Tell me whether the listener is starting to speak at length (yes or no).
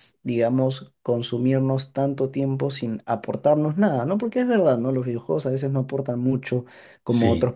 no